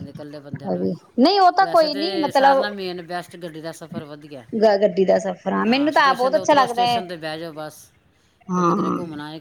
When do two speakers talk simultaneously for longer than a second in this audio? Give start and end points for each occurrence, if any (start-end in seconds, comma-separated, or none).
1.2-2.6, 5.7-7.0